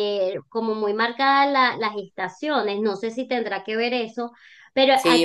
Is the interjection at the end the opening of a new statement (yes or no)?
yes